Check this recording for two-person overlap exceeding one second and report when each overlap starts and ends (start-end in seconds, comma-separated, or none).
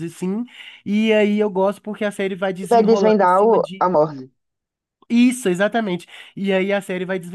2.6-4.2